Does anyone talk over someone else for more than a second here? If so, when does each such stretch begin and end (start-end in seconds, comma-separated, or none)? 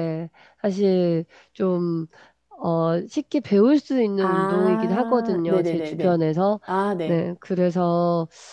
4.2-6.2